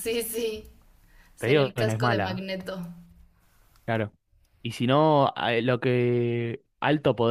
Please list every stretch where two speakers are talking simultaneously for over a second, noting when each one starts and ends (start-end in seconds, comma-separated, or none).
1.4-2.6